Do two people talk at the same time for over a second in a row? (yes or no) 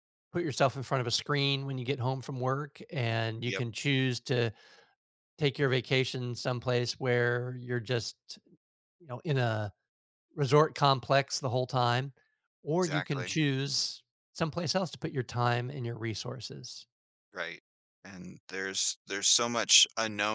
no